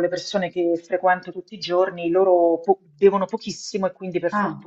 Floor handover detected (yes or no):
no